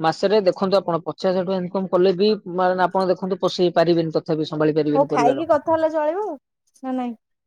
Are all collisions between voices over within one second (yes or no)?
yes